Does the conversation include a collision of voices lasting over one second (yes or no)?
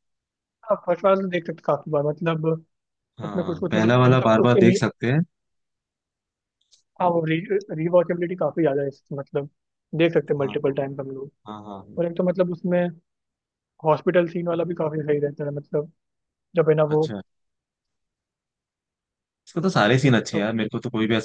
yes